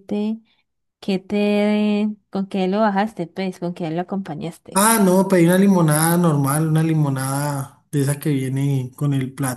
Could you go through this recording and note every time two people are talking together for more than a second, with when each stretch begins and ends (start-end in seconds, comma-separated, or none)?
none